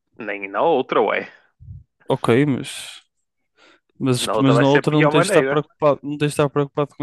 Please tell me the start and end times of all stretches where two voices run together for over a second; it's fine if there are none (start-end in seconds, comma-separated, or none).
4.2-5.6